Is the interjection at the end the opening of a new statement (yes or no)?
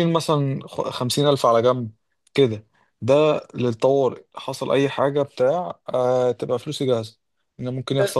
no